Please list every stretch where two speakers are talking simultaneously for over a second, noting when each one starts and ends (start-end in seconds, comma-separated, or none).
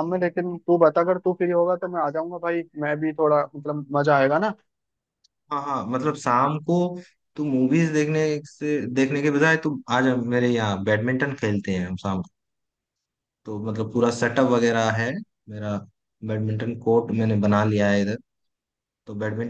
none